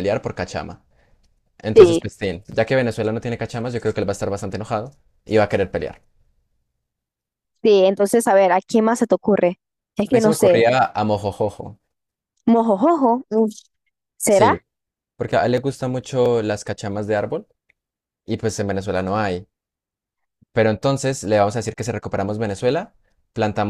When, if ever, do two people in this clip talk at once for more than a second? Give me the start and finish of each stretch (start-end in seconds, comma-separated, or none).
none